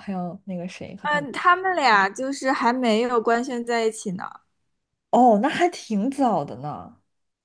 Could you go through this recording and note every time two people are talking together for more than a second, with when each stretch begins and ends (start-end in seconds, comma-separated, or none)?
none